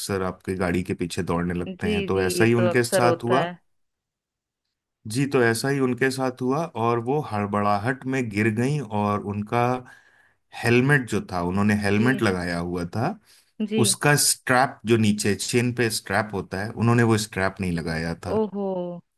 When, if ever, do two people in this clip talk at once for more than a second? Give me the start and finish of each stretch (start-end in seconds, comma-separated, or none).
1.7-3.4